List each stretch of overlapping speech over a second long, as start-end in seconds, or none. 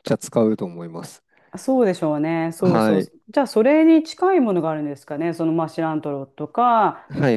none